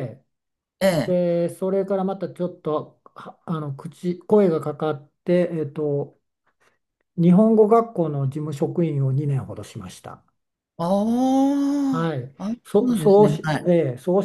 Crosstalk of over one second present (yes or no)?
yes